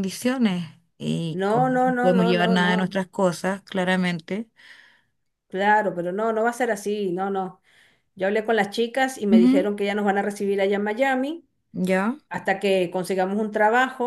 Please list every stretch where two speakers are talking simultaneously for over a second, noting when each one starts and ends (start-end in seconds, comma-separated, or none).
1.3-2.8